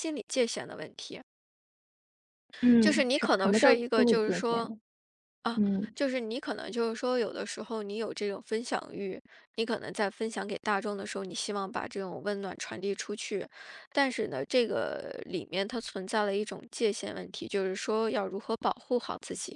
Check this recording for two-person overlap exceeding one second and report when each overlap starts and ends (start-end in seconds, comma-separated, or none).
2.8-4.7